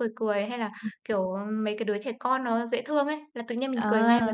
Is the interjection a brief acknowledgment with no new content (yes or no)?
yes